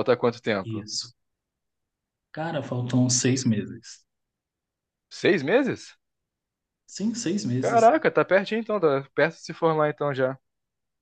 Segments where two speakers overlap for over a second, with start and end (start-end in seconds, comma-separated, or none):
none